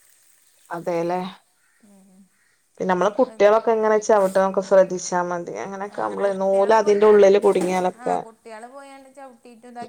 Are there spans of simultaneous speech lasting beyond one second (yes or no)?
yes